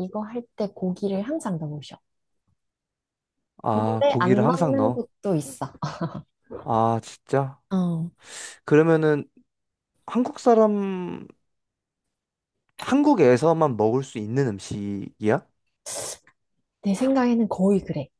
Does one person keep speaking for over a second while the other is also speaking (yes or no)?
yes